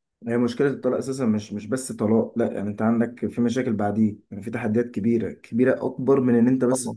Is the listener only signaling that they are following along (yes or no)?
yes